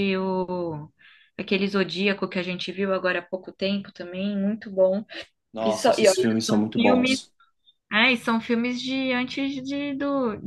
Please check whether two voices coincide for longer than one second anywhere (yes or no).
yes